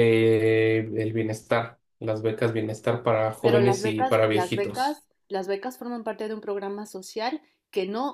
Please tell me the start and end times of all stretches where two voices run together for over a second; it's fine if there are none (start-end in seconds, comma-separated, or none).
3.4-5.0